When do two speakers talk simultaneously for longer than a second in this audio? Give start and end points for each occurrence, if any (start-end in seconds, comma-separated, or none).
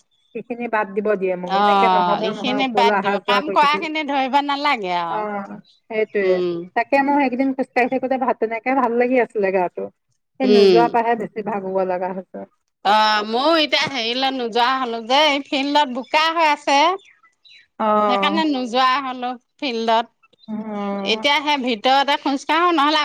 1.6-3.8